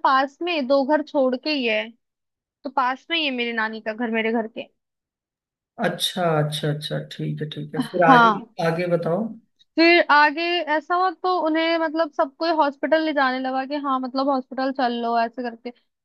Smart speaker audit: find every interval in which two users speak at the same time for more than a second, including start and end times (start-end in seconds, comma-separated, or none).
none